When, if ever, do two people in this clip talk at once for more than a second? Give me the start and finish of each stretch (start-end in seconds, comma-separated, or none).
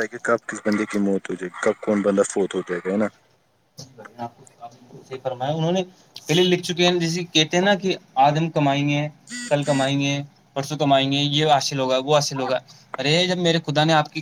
none